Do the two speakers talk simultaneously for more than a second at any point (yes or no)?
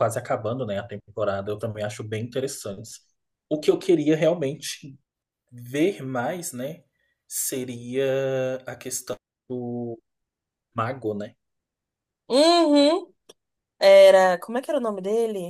no